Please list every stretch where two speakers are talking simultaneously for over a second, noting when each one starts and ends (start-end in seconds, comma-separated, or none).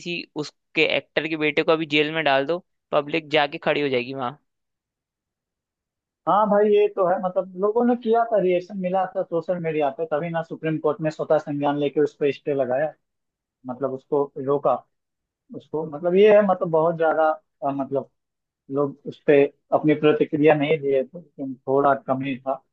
none